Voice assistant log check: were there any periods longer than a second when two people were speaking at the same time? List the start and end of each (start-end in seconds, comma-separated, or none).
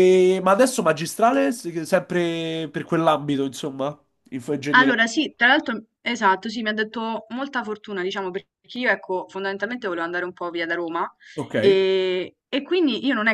none